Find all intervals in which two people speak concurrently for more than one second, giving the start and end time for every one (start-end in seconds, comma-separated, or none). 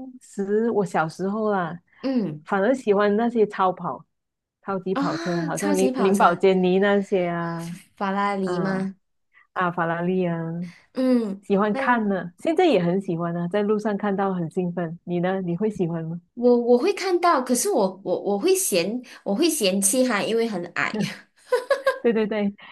4.9-6.4